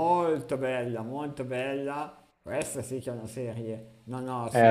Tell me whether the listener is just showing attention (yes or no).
no